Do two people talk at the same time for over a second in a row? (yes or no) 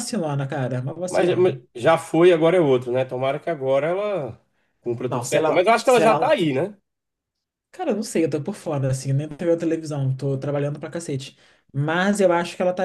yes